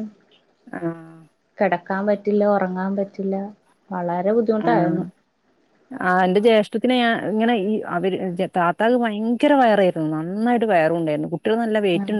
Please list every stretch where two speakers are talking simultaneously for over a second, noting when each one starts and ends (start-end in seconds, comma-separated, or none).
none